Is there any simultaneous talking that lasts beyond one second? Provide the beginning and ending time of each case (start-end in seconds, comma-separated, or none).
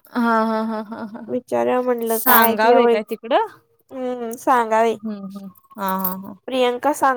2.1-3.5